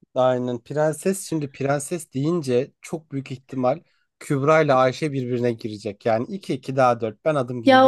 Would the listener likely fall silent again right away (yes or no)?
no